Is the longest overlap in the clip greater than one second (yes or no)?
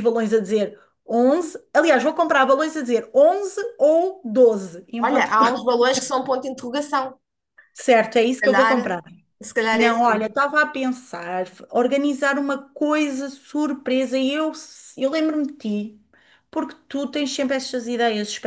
no